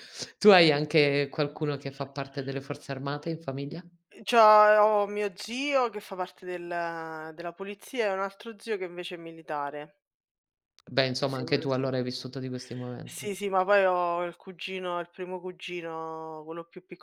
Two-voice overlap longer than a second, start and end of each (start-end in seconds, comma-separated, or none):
none